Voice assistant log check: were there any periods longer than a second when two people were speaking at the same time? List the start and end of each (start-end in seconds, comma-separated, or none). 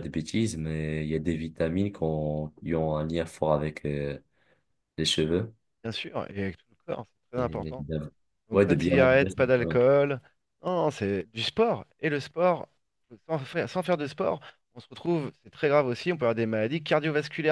8.5-9.8